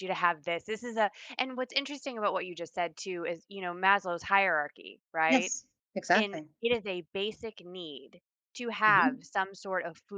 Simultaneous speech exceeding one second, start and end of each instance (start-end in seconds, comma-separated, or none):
none